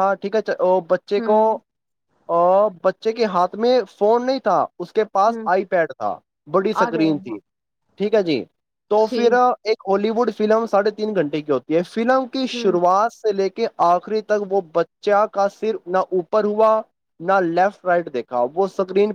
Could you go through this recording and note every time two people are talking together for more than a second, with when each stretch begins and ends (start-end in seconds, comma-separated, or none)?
none